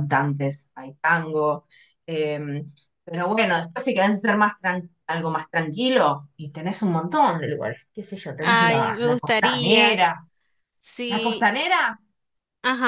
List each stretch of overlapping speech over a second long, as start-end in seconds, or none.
8.4-10.0